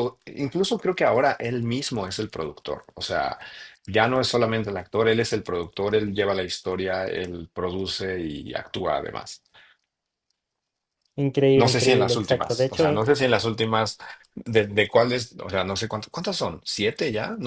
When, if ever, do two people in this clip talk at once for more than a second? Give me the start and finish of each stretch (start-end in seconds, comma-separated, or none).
11.6-13.1